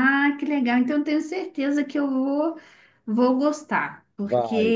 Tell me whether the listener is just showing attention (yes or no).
yes